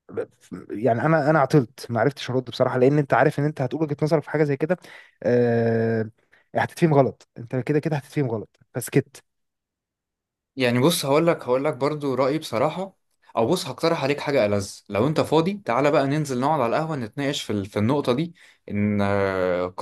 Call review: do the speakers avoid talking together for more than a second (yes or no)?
yes